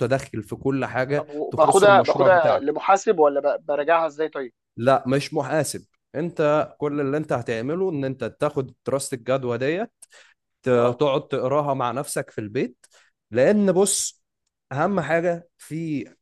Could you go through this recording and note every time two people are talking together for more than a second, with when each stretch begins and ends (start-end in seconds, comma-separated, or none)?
1.1-2.7